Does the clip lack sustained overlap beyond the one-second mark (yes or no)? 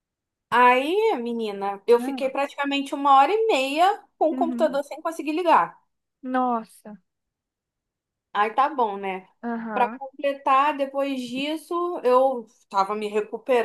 yes